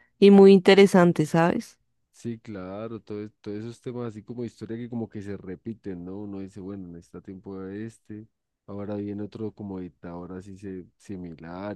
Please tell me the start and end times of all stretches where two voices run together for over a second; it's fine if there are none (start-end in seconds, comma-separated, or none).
none